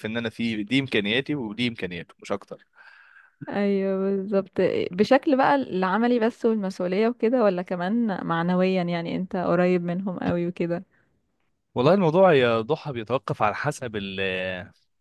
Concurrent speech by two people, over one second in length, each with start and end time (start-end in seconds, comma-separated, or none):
none